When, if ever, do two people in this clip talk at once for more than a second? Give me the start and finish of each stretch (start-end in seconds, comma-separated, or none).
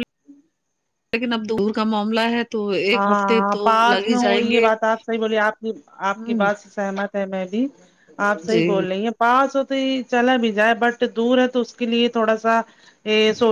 2.9-4.7